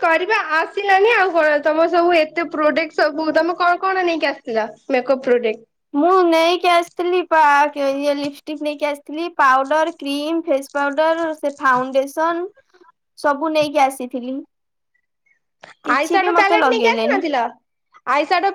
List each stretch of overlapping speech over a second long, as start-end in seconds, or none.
15.9-17.2